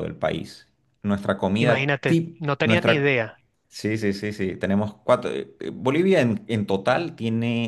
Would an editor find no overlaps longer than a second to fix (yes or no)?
no